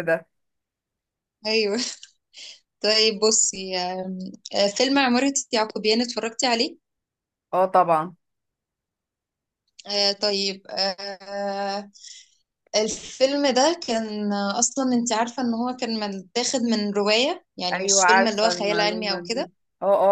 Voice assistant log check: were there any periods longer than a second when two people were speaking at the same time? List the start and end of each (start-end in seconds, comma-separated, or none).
17.7-19.5